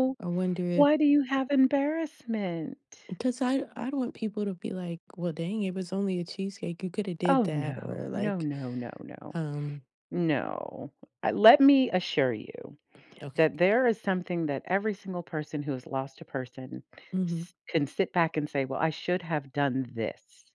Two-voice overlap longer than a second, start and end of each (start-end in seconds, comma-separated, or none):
7.3-8.5